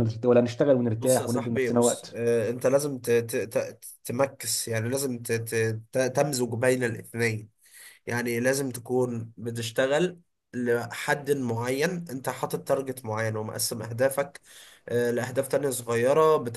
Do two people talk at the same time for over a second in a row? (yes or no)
yes